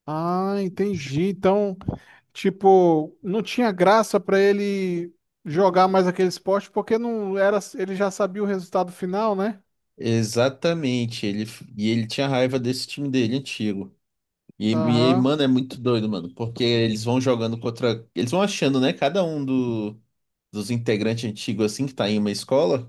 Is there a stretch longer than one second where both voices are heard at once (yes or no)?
no